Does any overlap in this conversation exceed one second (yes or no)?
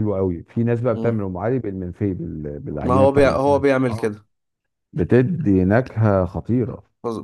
yes